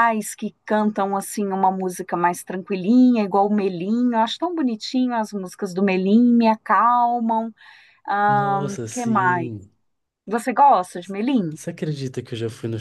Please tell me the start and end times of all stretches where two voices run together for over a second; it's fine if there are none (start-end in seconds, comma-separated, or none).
8.3-9.5